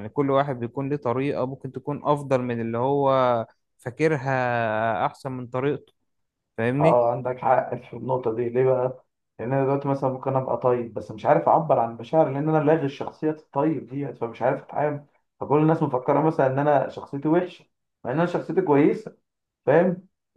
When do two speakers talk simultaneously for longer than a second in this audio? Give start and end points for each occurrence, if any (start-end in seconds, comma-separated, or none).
none